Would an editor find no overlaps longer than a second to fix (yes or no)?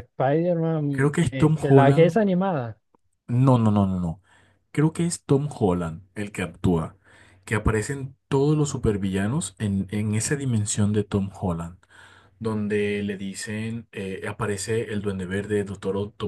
no